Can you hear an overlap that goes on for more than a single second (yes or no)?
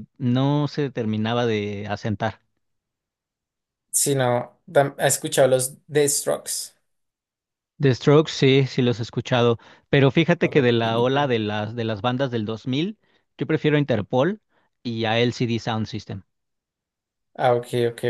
no